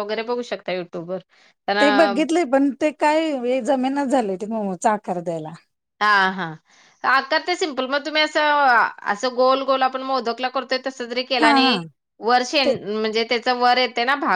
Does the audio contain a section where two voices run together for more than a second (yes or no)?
no